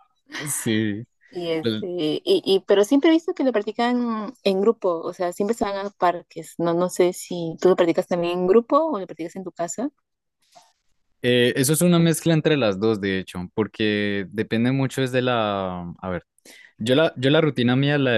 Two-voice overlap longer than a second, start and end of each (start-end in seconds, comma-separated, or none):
none